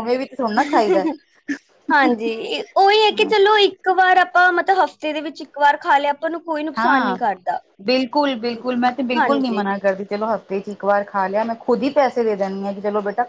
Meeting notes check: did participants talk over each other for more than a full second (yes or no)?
no